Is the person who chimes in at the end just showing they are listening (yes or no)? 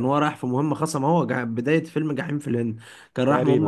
yes